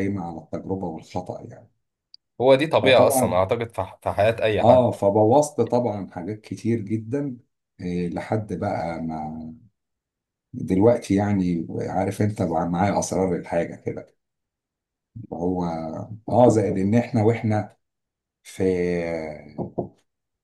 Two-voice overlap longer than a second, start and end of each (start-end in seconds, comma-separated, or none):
none